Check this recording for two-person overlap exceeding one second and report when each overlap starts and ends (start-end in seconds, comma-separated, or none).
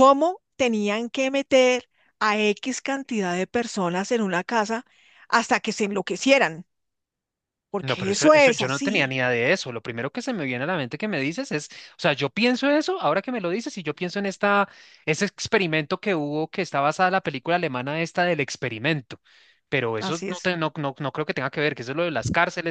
7.8-9.2